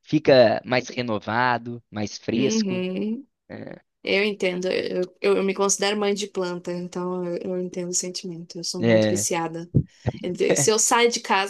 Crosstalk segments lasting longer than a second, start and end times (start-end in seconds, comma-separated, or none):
none